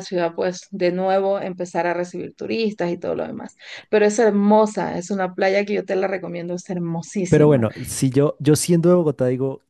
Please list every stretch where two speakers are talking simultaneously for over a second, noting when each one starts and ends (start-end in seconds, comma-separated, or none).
none